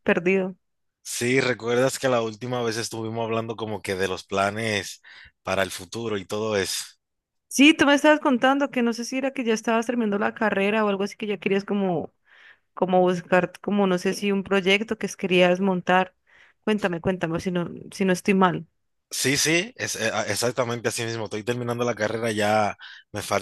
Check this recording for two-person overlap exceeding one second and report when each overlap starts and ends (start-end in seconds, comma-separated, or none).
none